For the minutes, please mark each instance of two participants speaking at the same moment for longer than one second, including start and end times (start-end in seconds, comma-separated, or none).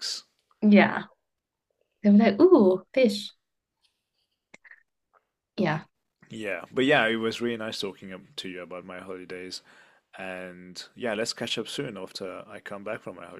none